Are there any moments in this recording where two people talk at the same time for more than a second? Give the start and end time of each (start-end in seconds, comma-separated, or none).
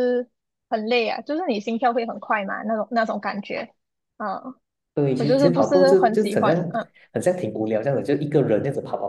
5.2-6.7